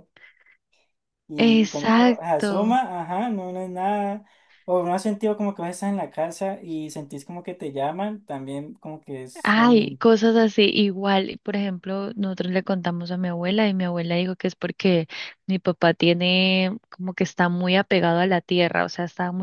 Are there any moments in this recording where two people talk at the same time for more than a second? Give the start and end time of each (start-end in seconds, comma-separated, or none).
1.4-2.8